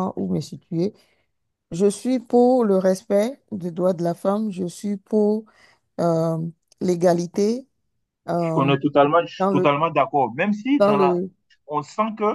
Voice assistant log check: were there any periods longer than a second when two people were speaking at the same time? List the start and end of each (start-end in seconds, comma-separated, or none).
none